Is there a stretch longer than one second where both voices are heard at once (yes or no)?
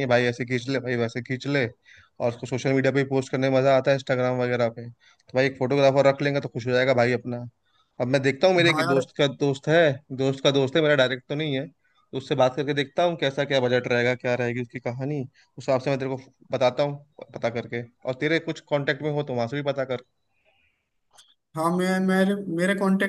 no